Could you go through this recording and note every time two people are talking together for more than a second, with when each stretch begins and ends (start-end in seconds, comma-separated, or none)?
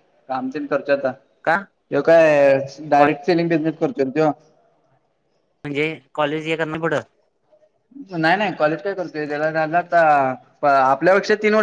none